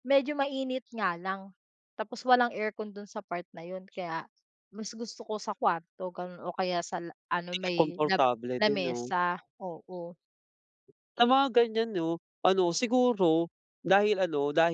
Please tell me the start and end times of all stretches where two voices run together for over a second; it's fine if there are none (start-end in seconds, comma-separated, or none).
7.5-9.1